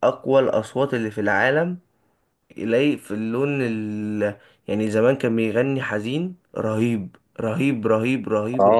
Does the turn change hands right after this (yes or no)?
yes